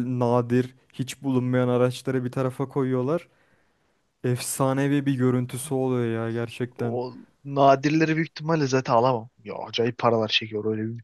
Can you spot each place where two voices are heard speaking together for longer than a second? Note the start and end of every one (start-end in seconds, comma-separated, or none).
none